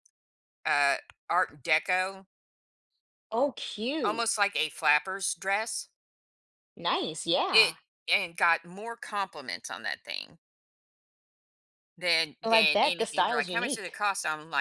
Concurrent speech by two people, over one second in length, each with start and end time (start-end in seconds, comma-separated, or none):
12.4-14.0